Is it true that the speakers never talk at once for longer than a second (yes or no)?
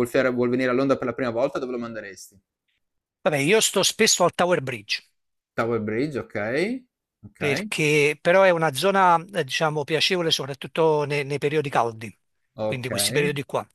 yes